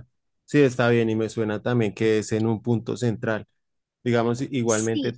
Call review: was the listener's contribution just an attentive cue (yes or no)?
yes